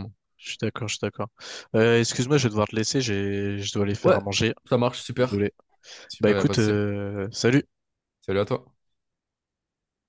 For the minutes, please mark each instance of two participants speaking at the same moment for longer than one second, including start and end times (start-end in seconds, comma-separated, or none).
none